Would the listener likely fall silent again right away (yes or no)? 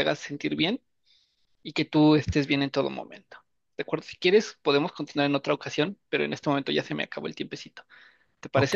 no